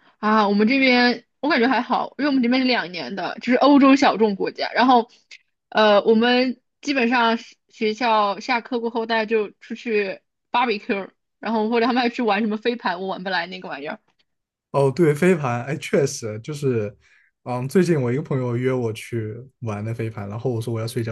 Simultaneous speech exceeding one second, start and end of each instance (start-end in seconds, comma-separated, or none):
none